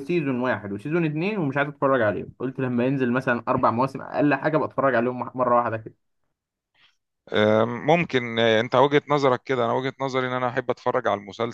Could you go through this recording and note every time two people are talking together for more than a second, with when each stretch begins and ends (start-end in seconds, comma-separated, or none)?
none